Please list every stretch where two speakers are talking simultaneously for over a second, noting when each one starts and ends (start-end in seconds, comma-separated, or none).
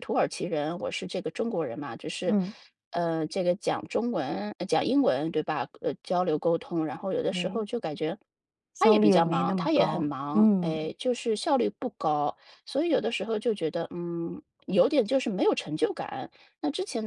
8.8-10.8